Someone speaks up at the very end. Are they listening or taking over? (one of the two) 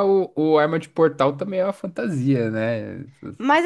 taking over